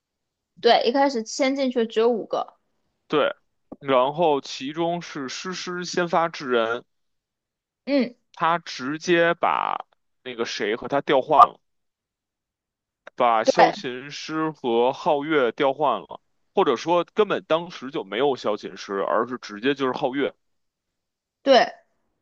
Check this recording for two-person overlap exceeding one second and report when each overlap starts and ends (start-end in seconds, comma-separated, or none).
none